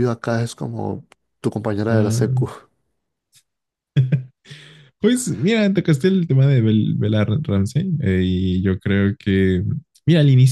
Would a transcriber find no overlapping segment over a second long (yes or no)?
yes